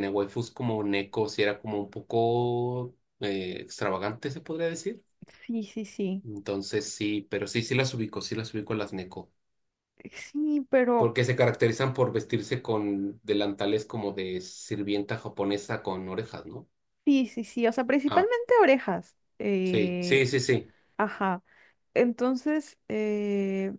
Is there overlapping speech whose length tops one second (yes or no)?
no